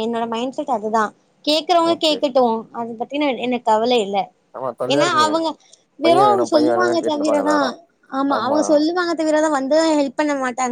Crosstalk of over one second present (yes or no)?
yes